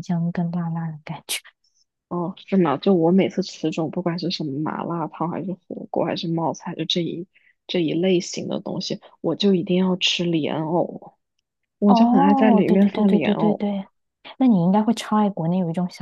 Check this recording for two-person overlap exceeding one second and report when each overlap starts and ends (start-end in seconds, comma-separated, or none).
11.9-13.6